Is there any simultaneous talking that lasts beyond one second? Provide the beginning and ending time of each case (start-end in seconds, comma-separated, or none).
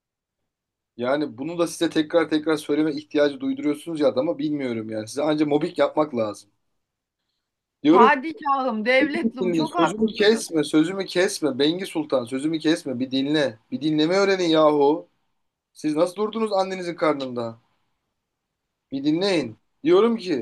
9.0-10.4